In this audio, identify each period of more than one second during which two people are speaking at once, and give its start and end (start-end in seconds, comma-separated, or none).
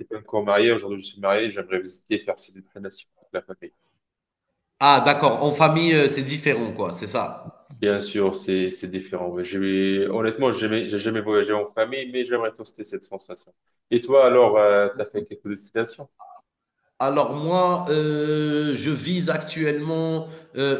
none